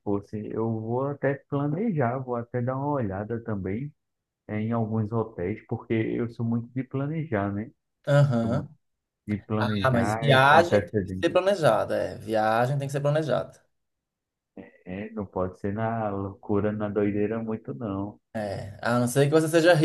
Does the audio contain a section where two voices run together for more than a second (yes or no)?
yes